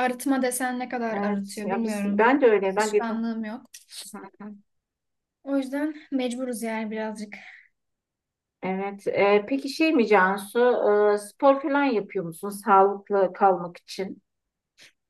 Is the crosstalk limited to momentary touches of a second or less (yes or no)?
no